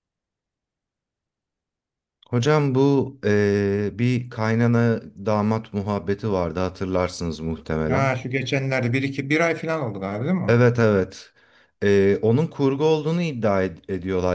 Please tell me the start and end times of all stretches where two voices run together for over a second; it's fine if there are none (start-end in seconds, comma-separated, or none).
none